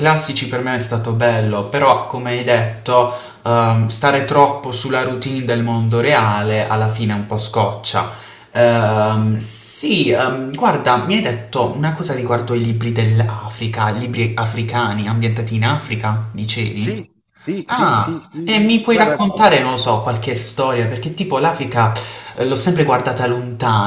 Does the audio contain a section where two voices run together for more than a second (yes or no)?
yes